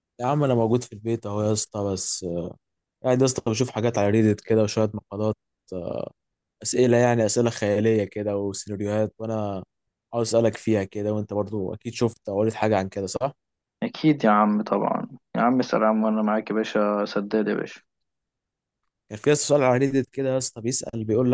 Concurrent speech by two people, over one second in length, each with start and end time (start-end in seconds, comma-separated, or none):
none